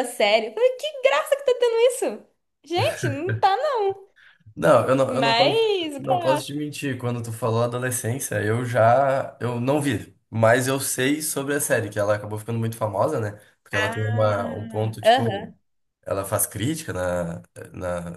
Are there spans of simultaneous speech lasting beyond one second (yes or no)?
yes